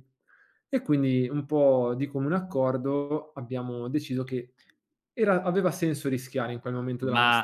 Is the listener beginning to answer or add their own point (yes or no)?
yes